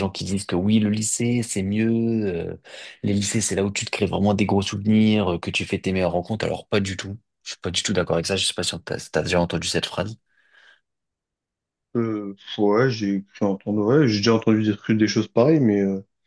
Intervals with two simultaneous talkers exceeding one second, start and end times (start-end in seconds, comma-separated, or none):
none